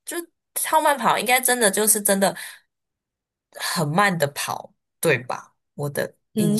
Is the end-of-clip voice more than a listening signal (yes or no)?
yes